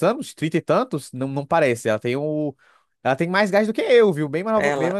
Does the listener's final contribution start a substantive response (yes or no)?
yes